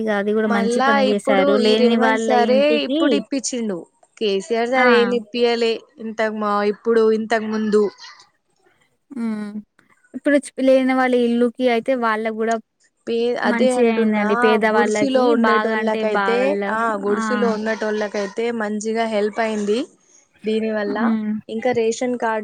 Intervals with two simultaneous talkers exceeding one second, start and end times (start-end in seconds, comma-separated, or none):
0.5-3.0, 14.7-16.4